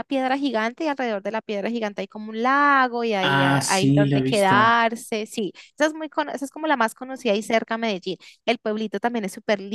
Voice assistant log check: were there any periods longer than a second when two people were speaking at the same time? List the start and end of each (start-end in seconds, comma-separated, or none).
3.2-4.7